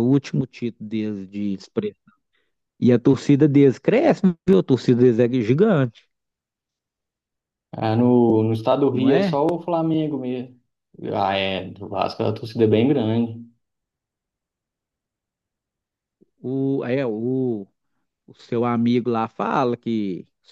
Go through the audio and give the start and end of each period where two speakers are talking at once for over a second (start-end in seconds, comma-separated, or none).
none